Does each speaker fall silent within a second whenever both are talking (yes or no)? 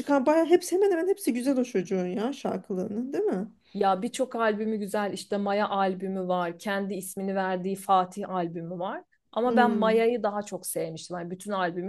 yes